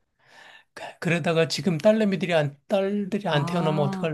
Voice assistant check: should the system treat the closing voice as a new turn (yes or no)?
yes